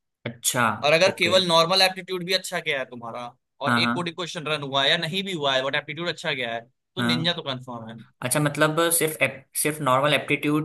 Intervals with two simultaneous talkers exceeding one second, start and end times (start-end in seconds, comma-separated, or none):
none